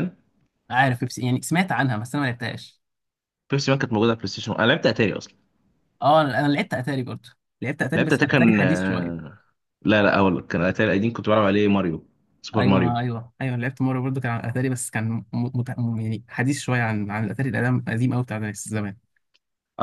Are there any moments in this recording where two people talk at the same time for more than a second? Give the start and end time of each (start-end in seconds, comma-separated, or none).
8.0-9.2